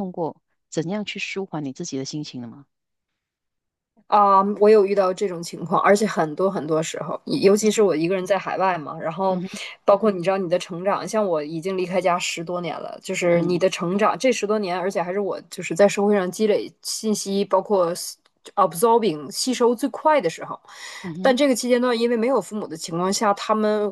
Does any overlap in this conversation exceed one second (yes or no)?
no